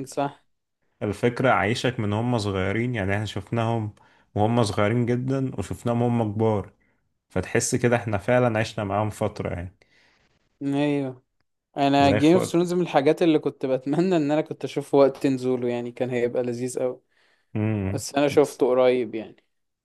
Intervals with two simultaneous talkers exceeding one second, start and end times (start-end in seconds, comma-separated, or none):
none